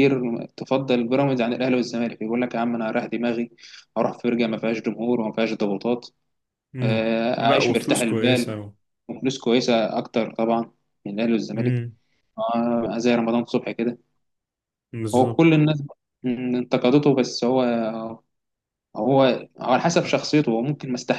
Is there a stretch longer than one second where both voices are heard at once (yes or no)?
yes